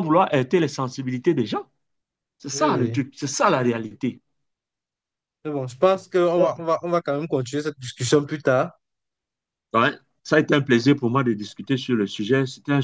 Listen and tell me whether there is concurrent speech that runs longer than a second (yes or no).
no